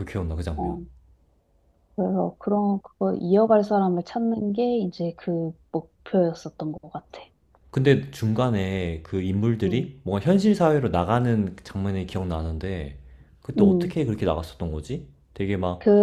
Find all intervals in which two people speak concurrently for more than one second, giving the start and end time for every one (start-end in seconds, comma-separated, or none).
none